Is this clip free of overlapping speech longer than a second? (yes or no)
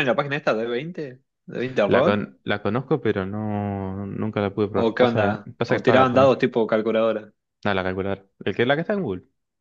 no